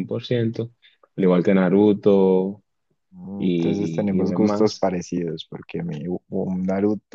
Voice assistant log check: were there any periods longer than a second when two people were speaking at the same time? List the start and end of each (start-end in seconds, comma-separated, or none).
3.3-4.9